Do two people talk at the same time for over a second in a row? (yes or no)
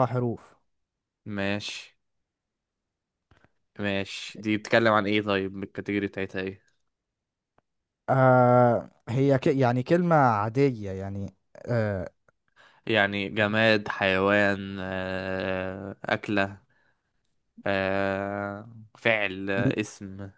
no